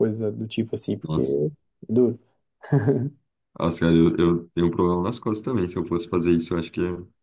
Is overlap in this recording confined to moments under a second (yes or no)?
yes